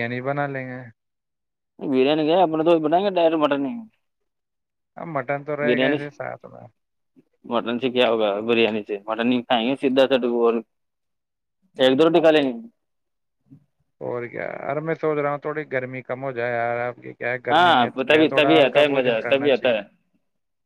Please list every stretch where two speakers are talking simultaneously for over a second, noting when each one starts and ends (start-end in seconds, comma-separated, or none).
17.5-19.8